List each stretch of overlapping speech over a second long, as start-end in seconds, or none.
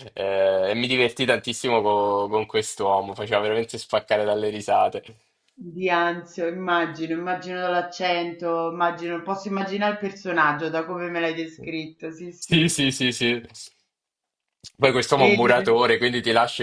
none